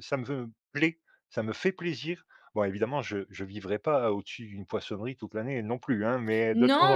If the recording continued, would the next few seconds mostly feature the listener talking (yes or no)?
yes